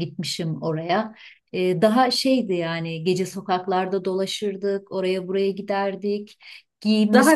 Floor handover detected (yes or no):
no